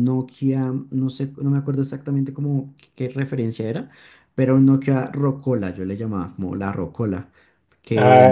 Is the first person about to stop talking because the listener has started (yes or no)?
yes